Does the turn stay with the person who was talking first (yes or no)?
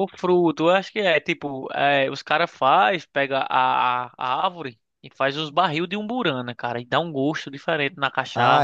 no